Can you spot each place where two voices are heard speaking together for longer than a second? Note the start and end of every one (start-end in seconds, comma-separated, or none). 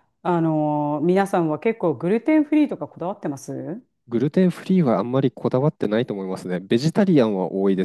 none